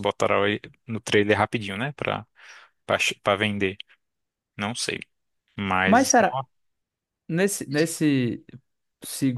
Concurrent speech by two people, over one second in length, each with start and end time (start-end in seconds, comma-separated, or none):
none